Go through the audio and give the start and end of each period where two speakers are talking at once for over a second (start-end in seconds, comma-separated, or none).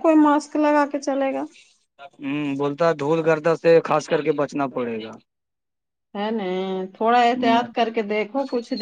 none